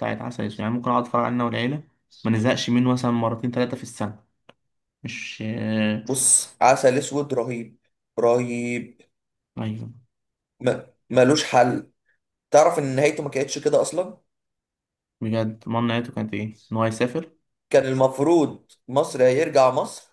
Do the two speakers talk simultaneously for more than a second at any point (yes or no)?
no